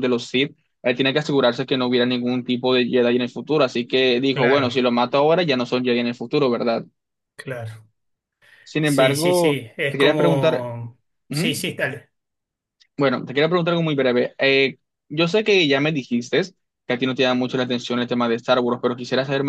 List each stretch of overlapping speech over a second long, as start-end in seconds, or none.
8.8-10.7